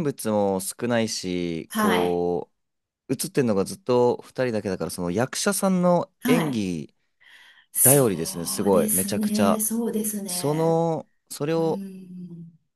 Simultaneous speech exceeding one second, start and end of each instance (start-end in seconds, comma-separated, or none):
7.8-9.6